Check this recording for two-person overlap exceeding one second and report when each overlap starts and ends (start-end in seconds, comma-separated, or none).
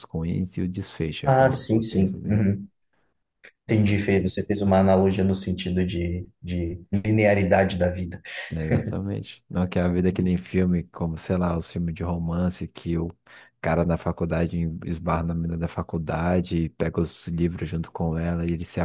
1.2-2.5